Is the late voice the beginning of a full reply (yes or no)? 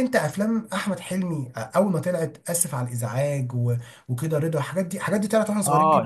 yes